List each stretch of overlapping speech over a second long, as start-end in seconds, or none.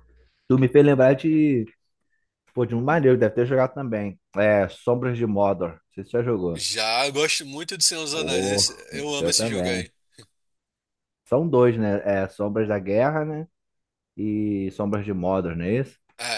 8.1-9.9